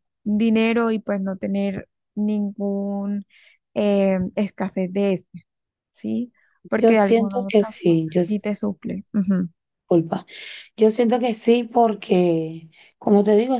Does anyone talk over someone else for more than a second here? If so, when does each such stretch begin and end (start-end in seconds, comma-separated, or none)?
6.8-8.2